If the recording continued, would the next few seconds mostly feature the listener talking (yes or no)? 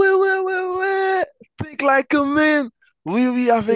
no